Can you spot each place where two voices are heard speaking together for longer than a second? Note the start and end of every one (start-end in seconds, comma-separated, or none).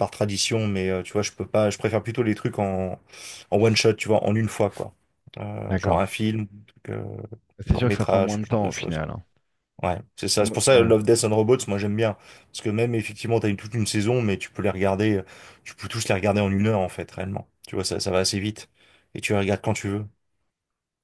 7.7-9.0